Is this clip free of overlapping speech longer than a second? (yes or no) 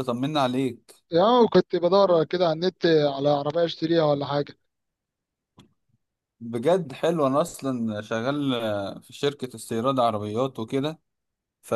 yes